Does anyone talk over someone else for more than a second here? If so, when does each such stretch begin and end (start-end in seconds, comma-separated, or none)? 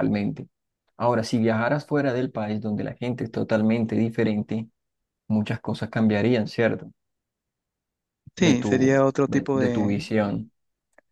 8.4-10.1